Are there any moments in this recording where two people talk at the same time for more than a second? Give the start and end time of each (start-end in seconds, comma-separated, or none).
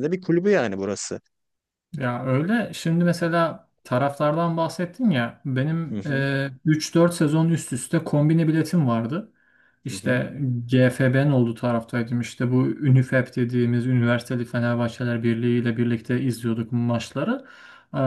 none